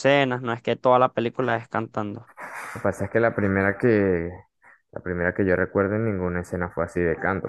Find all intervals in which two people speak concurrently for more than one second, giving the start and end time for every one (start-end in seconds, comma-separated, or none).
none